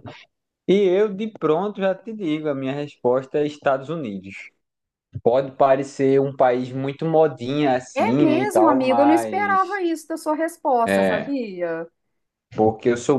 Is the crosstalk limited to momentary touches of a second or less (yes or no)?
no